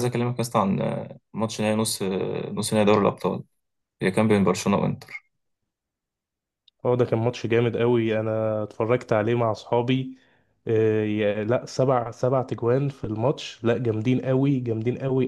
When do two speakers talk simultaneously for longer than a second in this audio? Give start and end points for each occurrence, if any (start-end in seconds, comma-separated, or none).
none